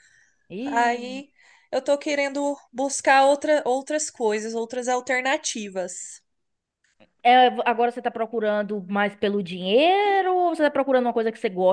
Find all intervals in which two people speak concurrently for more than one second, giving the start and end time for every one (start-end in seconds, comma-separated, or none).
none